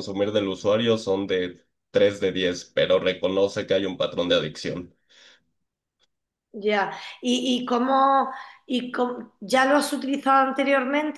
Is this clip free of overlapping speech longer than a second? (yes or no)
yes